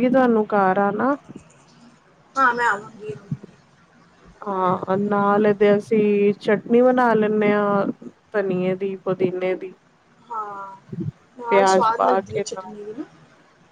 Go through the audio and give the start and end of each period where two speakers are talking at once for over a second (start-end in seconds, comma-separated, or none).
11.5-12.7